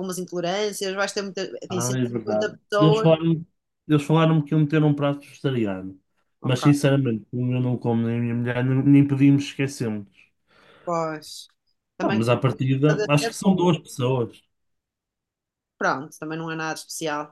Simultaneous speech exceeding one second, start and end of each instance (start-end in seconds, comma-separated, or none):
1.7-3.1